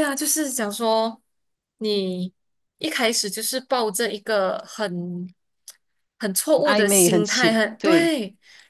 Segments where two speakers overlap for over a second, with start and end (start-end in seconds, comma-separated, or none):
6.6-8.1